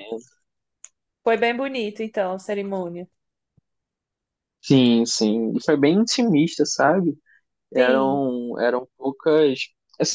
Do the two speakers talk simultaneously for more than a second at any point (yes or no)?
no